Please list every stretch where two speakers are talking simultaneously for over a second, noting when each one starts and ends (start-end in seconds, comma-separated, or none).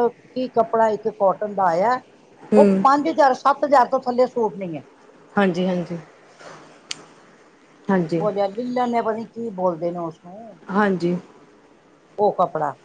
none